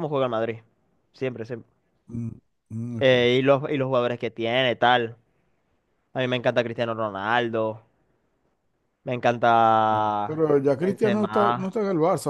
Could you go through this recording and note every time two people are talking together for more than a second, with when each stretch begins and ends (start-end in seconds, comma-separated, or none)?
9.9-11.7